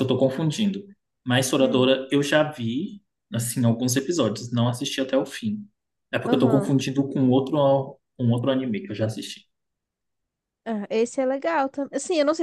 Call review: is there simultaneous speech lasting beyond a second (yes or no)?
no